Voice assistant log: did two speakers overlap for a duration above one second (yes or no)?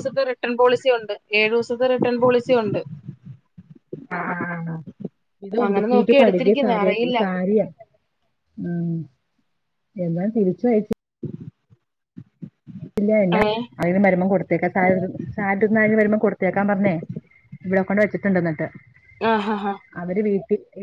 yes